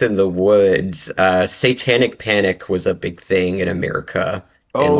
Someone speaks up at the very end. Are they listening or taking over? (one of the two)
listening